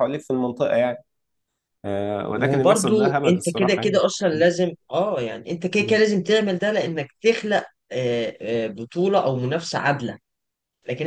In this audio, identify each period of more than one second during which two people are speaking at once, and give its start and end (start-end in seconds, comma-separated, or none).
2.3-4.5